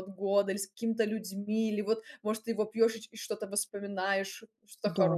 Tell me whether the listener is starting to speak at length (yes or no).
yes